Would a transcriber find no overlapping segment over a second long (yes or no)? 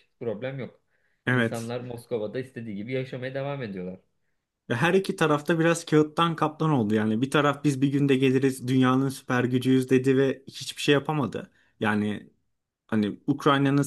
yes